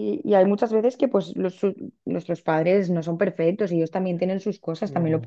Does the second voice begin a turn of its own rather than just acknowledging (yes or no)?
no